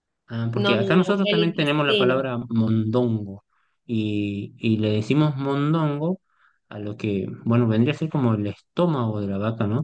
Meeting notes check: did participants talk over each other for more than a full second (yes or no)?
yes